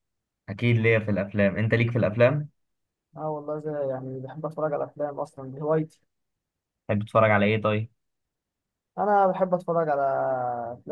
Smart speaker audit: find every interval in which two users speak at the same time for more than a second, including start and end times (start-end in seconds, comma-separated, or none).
none